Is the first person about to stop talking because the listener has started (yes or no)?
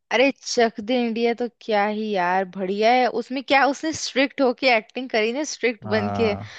no